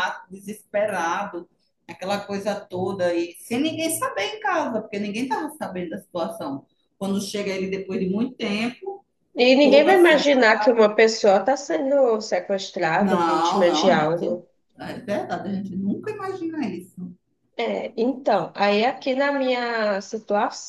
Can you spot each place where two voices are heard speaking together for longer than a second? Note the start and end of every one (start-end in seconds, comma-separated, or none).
9.6-10.8, 13.0-14.4